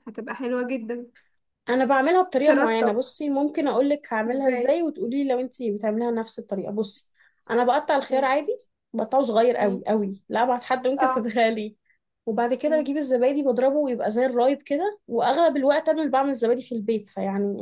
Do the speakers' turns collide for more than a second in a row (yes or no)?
no